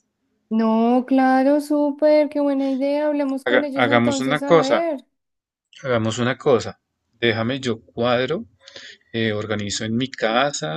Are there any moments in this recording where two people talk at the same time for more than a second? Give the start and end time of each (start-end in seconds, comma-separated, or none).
3.5-4.9